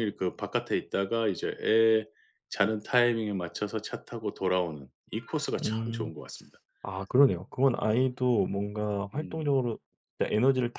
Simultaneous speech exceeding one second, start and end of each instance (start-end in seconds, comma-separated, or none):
none